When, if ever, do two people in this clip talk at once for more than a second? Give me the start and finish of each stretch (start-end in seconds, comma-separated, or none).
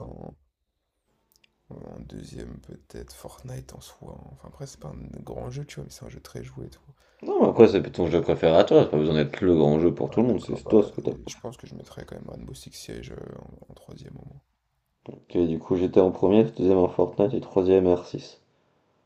10.1-11.4